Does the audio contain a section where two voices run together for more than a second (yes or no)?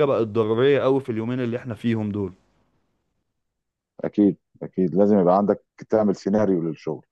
no